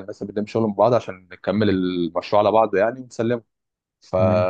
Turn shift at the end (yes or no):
no